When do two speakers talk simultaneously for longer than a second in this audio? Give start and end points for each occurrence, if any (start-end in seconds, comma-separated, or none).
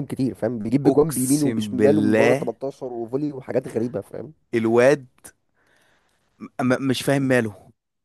0.8-2.5